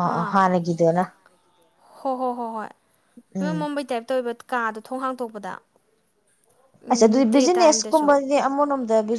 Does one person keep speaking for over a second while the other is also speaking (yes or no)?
no